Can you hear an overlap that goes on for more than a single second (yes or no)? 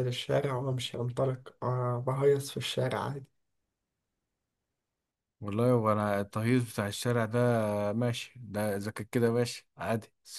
no